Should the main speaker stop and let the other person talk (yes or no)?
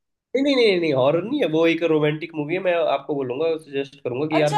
yes